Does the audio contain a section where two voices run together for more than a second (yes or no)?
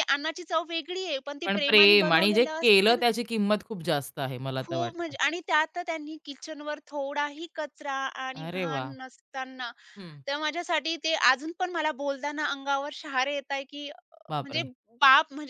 yes